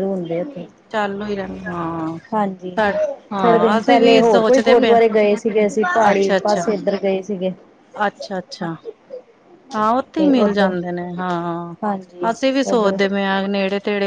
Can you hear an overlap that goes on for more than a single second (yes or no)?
yes